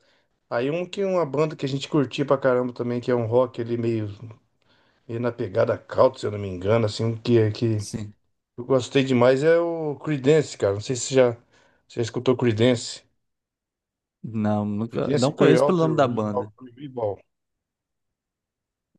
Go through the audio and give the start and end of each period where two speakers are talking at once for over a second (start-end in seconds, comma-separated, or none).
14.9-16.5